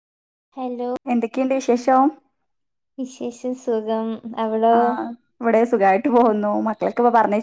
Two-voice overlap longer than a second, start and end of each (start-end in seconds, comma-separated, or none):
none